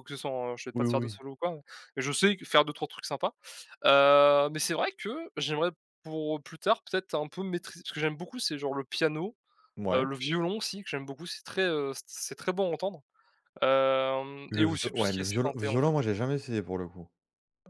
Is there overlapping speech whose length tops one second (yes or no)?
yes